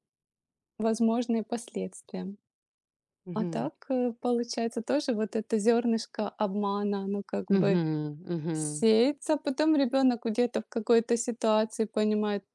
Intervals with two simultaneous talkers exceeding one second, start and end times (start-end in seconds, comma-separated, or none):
none